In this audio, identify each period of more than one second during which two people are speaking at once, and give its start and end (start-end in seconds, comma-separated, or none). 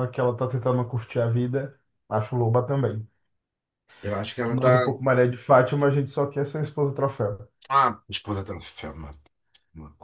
none